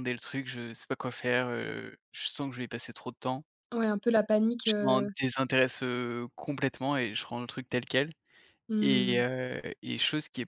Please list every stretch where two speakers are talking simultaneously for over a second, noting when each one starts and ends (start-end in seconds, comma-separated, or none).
none